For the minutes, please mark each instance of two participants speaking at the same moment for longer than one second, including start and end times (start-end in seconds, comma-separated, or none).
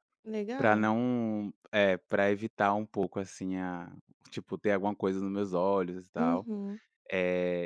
none